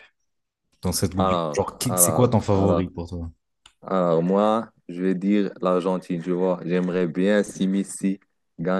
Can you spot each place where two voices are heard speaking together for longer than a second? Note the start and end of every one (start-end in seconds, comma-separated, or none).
1.2-2.9